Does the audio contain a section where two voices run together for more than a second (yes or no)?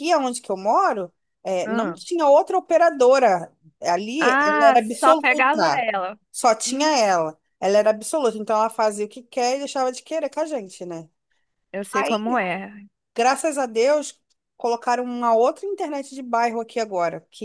yes